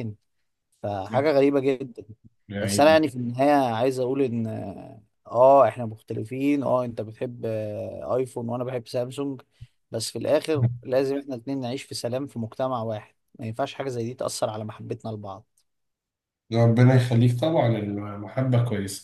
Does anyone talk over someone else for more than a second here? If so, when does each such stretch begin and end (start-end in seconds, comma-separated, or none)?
none